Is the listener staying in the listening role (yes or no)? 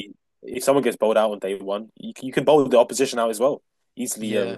yes